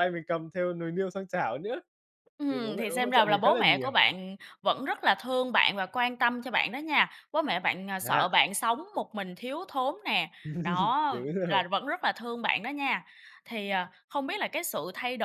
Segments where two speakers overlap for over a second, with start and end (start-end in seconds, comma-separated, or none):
2.5-3.9